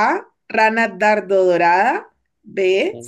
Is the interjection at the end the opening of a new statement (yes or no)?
no